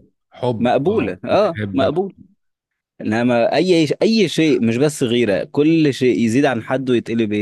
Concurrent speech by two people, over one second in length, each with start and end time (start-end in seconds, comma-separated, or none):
0.6-2.0